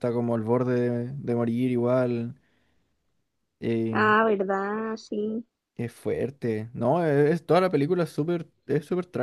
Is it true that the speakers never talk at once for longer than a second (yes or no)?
yes